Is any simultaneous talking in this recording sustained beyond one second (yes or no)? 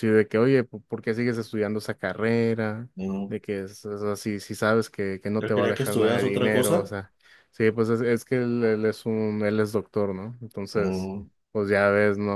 yes